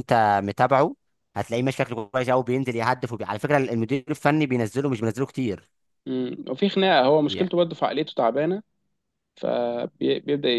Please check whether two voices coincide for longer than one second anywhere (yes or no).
no